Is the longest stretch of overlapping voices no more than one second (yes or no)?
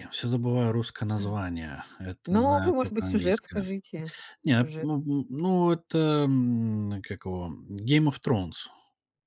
no